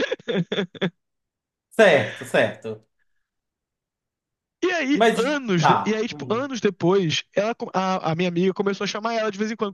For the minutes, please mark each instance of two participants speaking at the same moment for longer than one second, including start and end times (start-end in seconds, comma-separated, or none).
4.9-6.5